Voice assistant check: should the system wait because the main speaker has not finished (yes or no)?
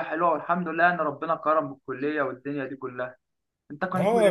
no